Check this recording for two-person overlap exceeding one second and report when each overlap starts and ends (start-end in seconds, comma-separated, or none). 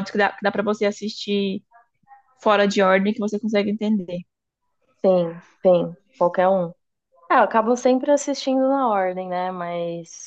none